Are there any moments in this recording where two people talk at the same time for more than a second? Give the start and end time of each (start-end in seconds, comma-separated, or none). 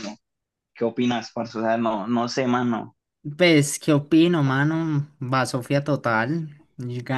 none